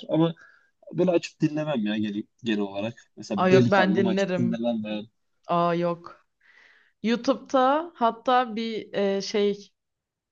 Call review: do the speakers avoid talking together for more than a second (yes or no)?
no